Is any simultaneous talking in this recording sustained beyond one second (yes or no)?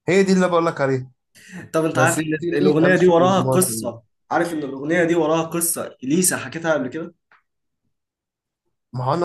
yes